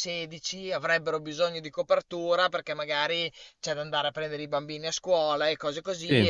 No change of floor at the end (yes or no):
yes